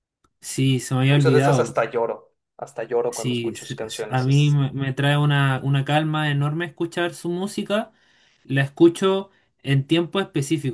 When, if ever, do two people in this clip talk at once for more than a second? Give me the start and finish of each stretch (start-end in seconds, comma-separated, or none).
3.1-4.6